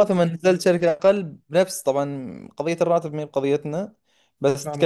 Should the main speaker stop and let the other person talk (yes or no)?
no